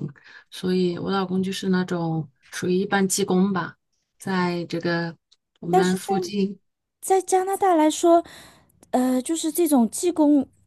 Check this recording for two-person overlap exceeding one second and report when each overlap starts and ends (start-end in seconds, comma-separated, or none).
none